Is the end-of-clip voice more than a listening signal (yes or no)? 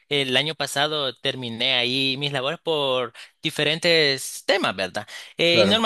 no